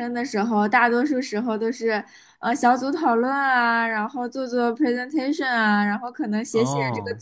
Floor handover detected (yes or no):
no